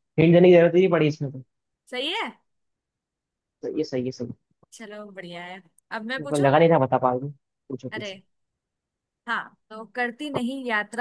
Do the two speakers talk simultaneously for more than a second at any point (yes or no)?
no